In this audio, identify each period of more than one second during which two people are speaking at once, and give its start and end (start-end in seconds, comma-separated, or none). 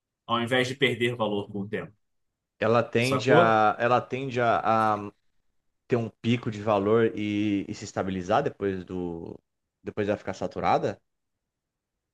none